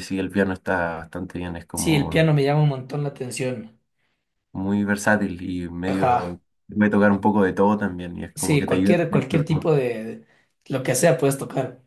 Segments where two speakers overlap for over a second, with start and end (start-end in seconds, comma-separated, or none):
8.3-9.7